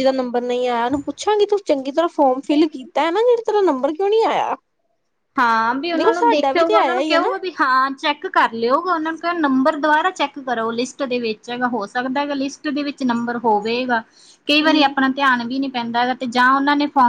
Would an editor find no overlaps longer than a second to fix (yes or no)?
no